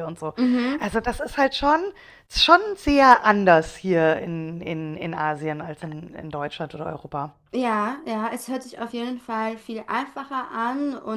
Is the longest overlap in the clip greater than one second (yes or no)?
no